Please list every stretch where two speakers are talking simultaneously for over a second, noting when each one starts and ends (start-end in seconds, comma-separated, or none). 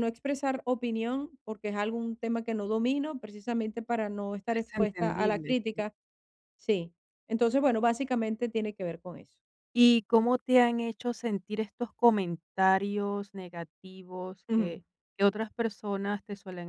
4.6-5.8